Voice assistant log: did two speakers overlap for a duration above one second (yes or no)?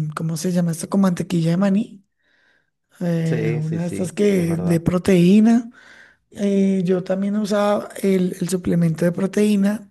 yes